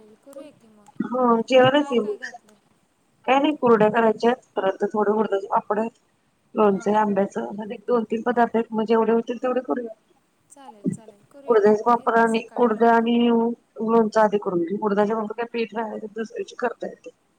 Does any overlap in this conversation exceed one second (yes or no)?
yes